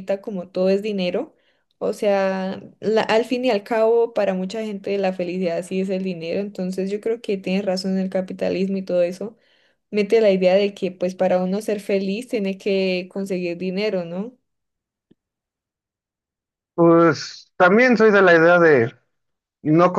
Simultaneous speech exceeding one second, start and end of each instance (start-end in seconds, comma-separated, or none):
none